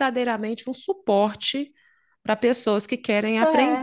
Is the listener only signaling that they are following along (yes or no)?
no